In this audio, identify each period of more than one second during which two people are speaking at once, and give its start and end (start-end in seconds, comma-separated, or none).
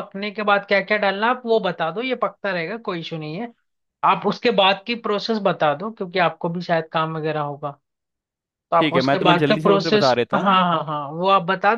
8.8-10.6